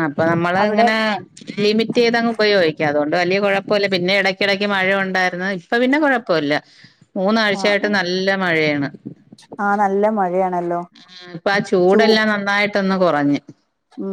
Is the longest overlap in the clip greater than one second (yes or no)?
no